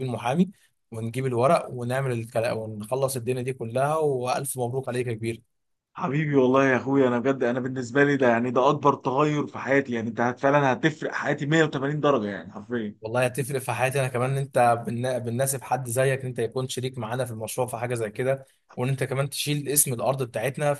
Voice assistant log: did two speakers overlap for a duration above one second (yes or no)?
no